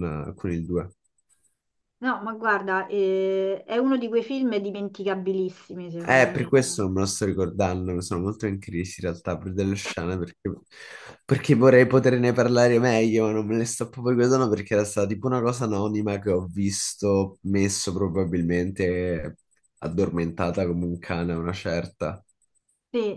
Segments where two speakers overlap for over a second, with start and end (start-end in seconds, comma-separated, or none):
none